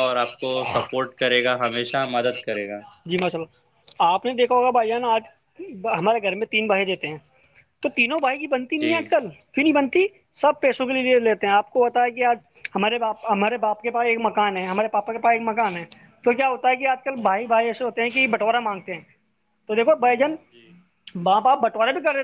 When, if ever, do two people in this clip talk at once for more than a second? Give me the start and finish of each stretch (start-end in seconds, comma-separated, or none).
none